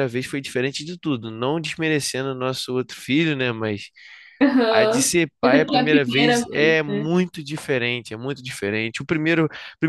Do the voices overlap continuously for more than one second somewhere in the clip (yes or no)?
yes